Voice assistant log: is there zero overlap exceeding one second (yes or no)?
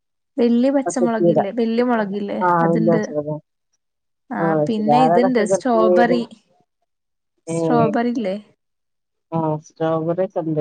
no